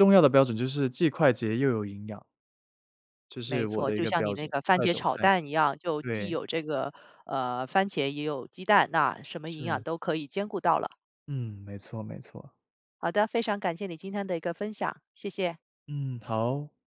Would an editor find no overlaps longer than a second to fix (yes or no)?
no